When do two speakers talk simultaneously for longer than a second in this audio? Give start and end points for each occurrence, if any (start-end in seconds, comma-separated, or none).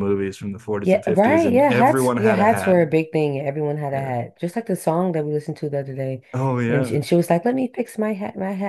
0.8-2.8